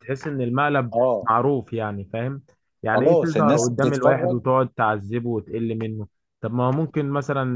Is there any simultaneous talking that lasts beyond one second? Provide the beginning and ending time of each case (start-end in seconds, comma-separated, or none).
2.9-4.4